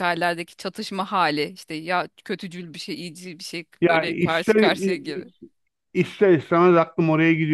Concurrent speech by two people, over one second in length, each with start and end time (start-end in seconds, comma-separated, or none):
3.8-5.3